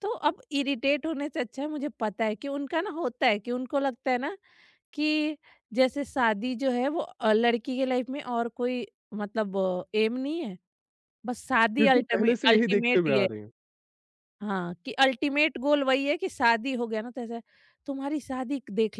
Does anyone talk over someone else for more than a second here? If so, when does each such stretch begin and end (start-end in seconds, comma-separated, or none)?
11.8-13.3